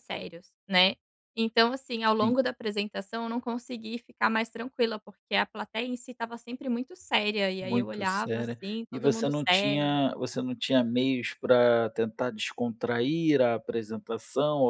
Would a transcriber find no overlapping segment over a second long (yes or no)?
no